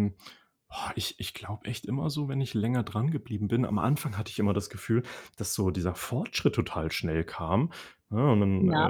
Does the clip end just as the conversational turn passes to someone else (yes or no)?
no